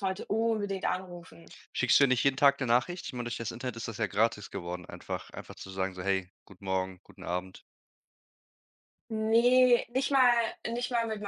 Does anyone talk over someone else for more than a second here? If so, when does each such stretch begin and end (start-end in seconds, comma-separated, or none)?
none